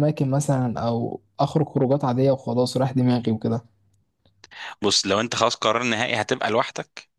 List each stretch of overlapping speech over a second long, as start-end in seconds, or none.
none